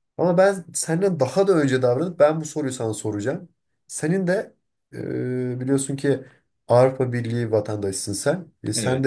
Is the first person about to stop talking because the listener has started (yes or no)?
no